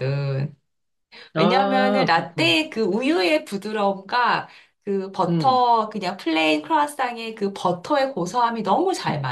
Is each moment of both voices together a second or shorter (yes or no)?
no